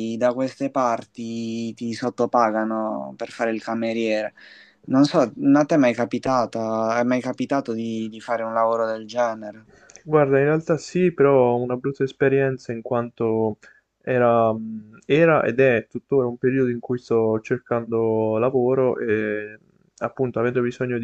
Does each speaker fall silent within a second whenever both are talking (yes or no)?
yes